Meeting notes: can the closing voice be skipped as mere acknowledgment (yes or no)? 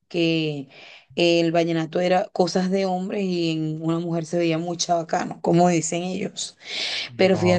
yes